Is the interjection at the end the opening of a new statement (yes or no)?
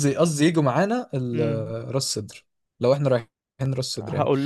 no